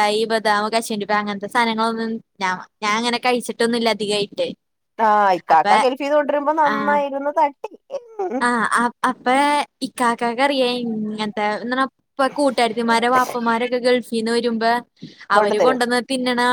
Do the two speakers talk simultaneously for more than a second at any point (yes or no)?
no